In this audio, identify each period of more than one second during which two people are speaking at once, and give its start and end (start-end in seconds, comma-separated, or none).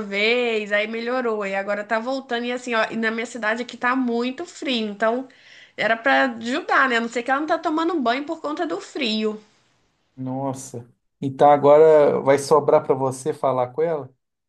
none